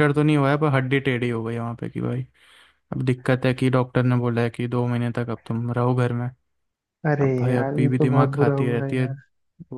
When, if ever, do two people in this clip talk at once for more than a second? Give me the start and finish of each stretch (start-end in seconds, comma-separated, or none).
7.2-9.1